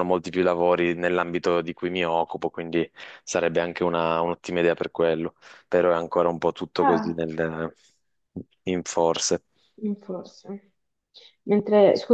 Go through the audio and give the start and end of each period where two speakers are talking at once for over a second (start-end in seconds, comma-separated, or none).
none